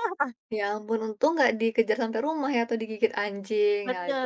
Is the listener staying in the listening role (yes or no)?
no